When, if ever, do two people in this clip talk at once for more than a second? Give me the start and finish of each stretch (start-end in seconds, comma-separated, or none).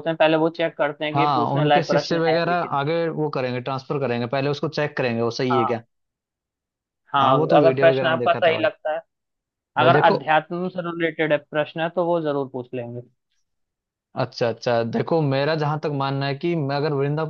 1.1-2.8, 7.2-8.7